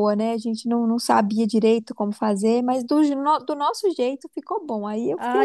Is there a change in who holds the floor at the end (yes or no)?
yes